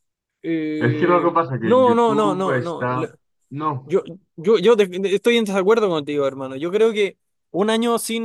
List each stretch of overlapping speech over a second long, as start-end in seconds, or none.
0.9-2.8